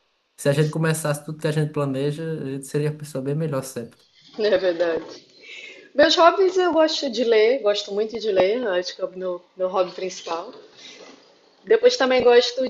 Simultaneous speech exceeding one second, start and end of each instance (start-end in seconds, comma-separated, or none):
none